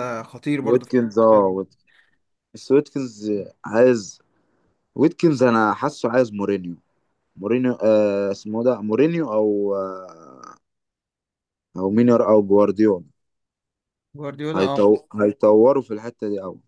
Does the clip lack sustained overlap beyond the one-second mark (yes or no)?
yes